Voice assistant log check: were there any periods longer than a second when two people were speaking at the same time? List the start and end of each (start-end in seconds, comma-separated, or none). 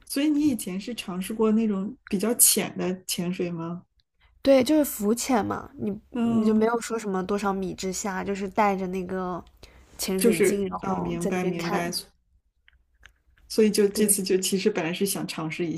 10.2-11.9